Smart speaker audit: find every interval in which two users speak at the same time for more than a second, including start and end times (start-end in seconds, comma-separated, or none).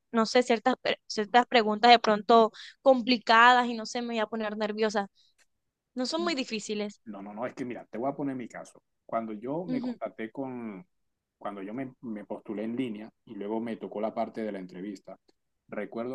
none